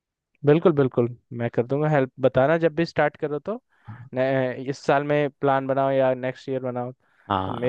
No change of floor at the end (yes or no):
no